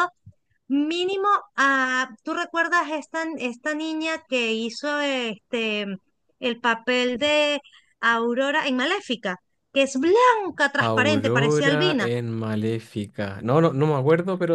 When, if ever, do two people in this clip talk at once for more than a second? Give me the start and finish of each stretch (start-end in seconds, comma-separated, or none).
10.8-12.1